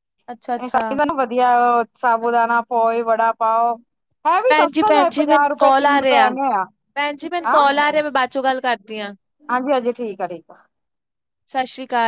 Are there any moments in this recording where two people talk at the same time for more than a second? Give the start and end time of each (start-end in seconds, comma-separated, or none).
4.5-6.3